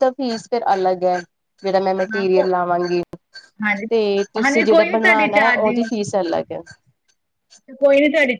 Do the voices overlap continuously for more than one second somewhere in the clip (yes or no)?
yes